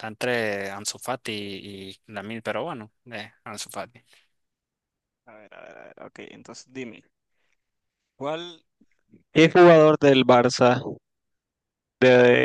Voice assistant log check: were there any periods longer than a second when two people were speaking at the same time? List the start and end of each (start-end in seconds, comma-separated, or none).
none